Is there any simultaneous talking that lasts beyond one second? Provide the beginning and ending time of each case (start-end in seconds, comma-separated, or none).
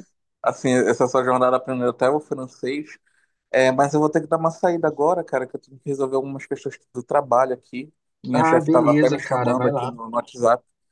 8.3-9.9